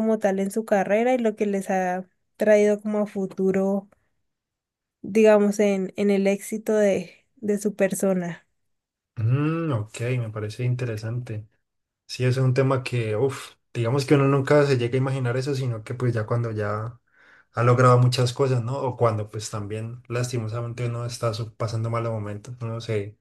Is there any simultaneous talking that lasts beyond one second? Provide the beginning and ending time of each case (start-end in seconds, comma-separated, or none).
none